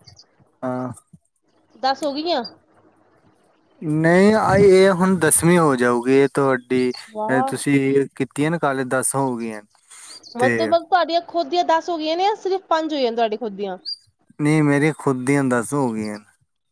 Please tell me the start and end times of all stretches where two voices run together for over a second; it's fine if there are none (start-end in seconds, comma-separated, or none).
none